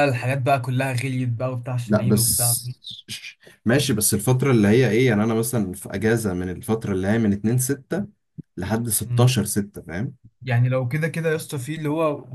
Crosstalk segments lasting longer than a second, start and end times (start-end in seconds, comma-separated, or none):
none